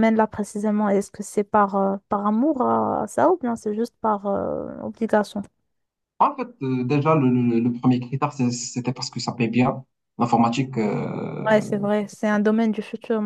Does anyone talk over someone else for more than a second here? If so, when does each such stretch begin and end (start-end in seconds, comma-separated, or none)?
none